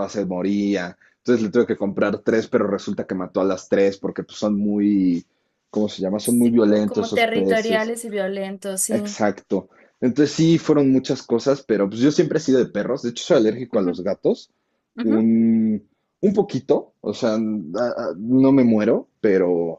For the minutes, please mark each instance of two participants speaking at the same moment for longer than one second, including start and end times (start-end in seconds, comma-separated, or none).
6.2-7.9